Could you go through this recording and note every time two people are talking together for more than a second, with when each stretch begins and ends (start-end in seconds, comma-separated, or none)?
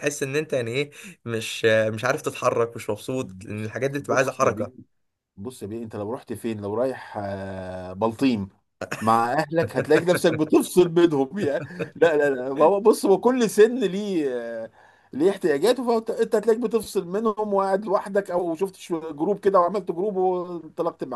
3.2-4.7